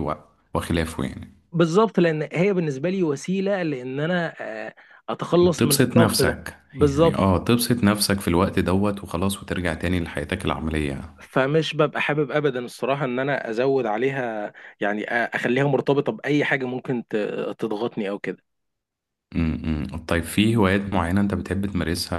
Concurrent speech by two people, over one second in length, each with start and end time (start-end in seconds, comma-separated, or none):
5.6-7.2